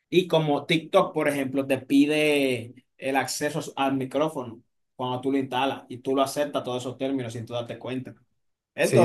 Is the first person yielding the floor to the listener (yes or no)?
yes